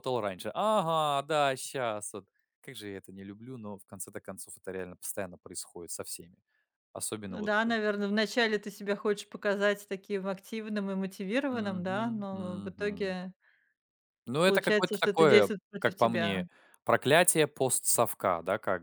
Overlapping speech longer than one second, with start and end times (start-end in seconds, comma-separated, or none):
11.5-13.0, 14.4-16.4